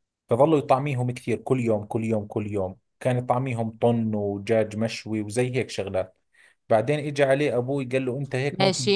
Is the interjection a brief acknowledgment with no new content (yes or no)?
yes